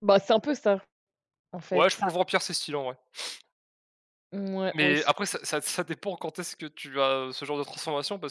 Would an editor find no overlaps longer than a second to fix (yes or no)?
yes